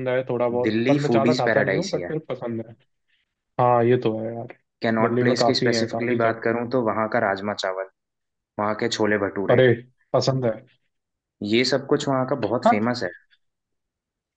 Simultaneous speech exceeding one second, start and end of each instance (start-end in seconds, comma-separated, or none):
0.7-2.1, 5.0-6.4